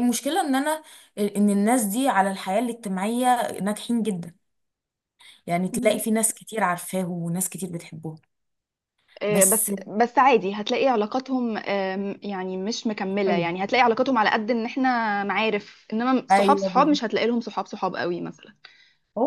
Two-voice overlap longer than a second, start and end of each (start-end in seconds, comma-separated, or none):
none